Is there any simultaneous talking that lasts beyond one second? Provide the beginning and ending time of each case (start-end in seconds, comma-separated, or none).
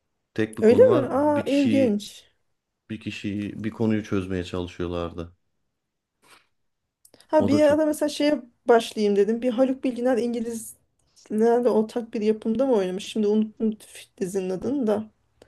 0.6-2.0